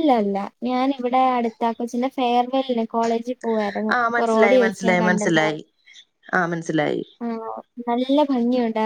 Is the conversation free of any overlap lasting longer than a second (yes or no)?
no